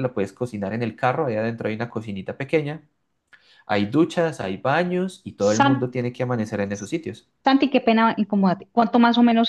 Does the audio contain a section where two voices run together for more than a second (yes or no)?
no